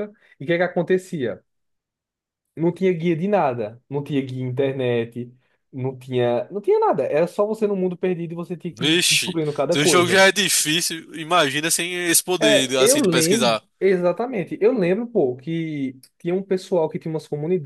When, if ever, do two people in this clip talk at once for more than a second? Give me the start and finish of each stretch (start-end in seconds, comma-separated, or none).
8.7-10.2, 12.4-13.6